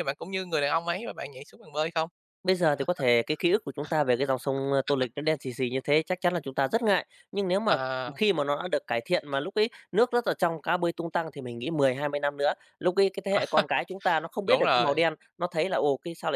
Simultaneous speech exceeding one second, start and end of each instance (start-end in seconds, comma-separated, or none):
none